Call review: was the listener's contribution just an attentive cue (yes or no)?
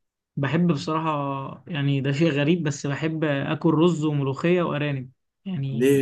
no